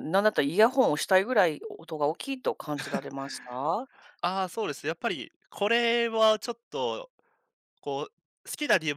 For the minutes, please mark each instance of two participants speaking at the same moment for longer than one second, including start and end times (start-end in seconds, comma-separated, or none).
none